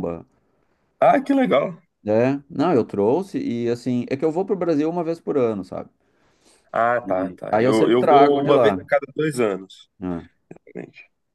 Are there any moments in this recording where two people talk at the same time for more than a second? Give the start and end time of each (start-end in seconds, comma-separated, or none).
7.5-8.8